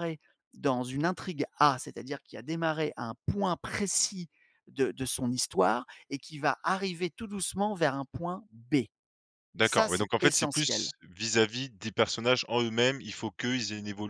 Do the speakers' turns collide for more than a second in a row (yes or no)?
yes